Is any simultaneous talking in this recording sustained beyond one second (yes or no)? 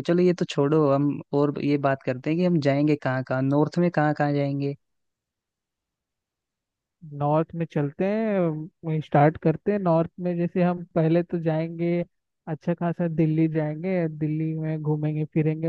no